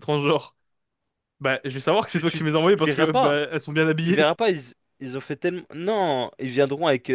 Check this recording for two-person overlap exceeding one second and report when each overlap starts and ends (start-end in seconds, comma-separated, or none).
2.1-3.4